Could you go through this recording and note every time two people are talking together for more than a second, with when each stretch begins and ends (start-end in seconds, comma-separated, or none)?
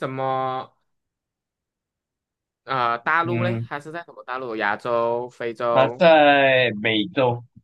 none